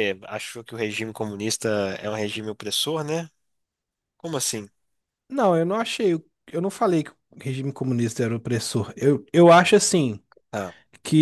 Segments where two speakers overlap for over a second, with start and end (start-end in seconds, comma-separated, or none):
none